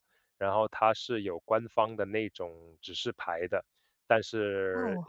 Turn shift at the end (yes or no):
no